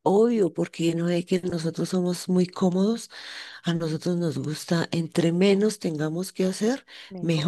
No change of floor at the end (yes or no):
yes